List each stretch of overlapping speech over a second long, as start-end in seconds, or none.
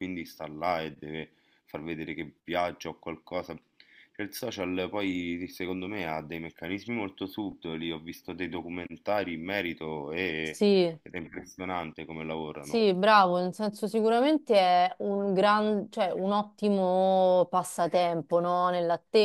none